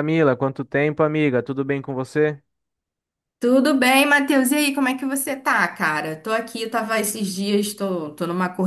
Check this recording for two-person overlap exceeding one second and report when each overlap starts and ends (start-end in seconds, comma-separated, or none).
none